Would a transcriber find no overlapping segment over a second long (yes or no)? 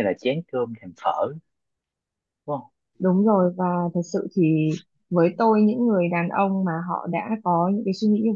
yes